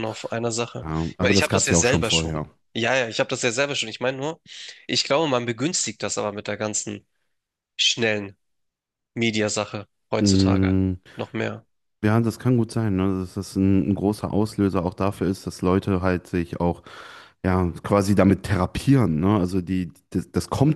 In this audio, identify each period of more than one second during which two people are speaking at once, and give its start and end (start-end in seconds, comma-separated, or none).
0.8-2.5